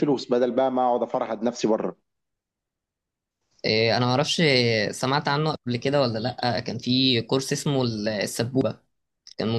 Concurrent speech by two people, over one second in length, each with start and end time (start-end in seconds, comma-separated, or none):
none